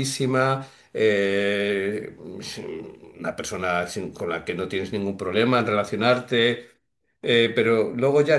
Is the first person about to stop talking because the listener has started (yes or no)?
no